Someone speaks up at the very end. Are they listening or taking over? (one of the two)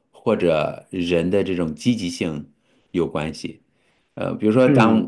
listening